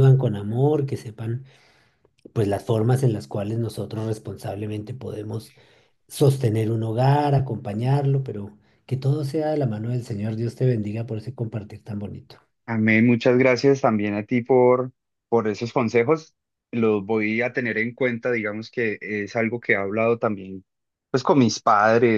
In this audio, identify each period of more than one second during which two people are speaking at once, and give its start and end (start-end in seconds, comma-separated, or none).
none